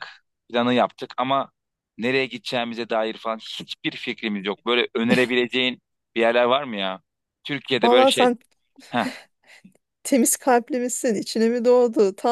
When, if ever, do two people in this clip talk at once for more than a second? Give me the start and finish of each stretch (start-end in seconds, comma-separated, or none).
none